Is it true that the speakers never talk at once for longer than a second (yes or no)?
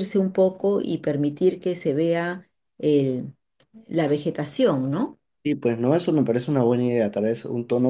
yes